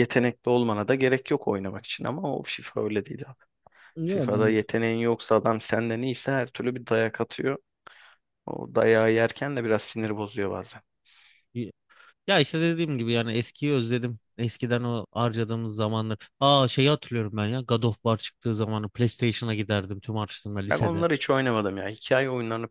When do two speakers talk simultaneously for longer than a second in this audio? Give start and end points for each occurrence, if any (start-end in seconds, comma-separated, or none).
none